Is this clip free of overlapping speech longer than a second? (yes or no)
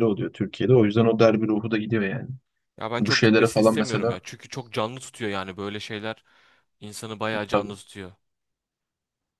no